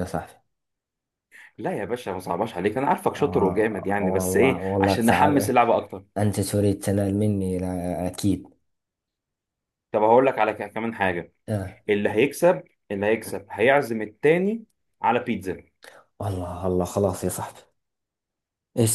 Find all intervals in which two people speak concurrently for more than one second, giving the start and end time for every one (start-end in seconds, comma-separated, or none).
3.1-5.5